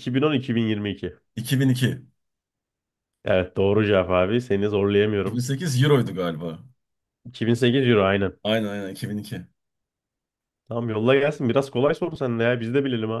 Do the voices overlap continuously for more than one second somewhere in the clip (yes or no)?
no